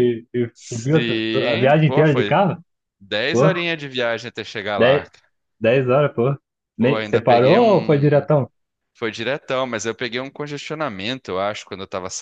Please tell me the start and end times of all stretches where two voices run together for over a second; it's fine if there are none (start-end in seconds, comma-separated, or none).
0.5-2.4, 6.8-8.3